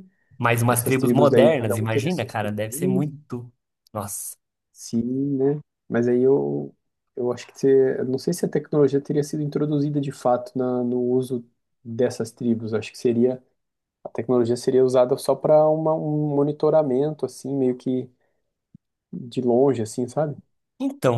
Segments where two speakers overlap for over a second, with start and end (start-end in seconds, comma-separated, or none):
0.7-3.1